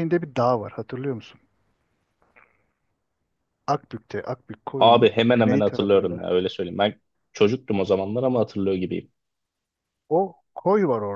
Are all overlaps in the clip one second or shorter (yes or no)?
no